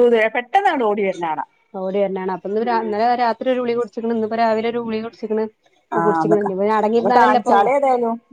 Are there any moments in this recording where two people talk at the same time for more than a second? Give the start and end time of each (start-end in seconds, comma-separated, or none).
6.0-7.5